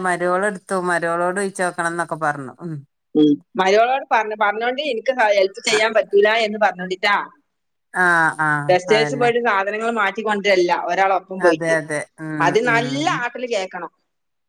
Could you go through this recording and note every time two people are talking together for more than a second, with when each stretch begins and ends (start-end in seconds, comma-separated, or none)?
none